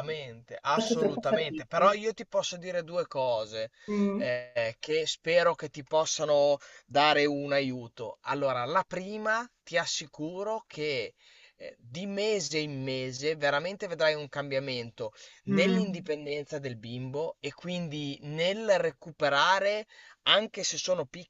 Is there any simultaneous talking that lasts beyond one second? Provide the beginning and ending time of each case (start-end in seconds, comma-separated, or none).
0.7-2.0